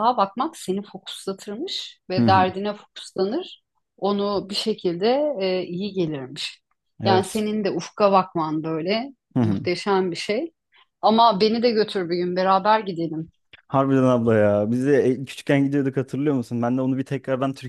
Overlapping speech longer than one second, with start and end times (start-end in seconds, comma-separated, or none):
none